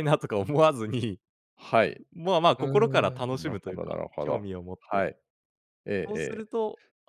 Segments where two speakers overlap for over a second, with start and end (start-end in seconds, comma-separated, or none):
2.6-5.0